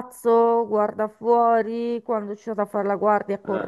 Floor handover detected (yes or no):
no